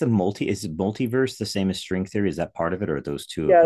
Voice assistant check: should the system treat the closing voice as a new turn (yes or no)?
yes